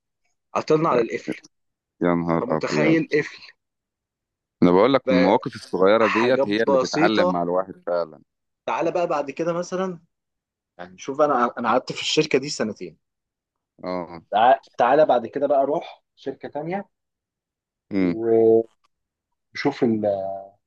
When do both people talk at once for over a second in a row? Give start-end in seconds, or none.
6.0-7.4